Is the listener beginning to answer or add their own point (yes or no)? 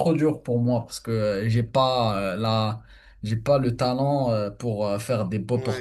yes